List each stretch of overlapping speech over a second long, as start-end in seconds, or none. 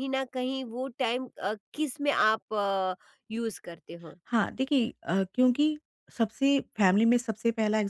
none